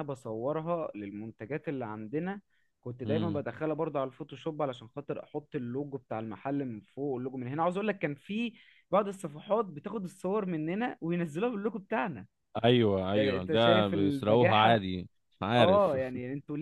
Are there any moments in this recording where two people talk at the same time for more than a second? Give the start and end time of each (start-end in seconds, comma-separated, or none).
13.1-14.8